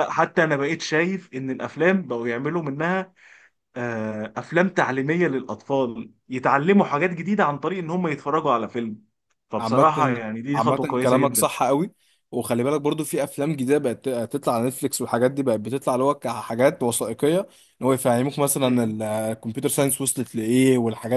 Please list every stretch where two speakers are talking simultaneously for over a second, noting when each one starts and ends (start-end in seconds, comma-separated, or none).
9.6-11.5